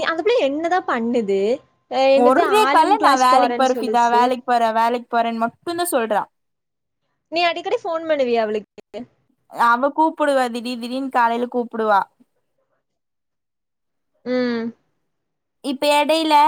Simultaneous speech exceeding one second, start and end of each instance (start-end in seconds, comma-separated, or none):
2.2-4.2